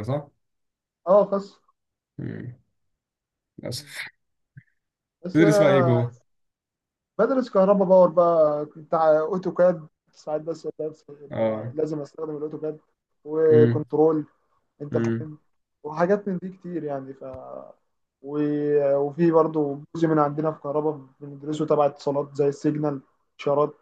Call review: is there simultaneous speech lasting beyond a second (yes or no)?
no